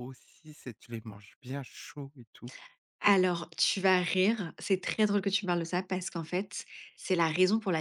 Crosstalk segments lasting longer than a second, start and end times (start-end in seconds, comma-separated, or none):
none